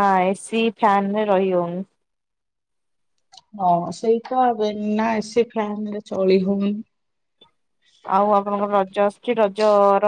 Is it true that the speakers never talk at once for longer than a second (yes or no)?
yes